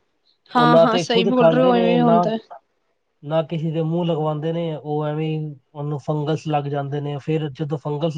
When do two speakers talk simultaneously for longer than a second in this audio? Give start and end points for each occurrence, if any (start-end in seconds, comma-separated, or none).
0.6-2.2